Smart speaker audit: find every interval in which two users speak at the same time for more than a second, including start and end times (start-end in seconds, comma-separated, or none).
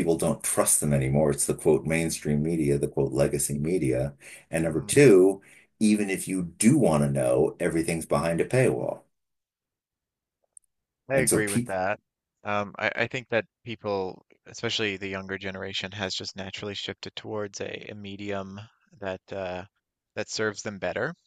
none